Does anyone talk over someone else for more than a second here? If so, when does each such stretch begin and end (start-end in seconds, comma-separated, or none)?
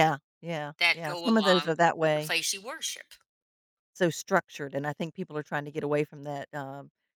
0.8-2.3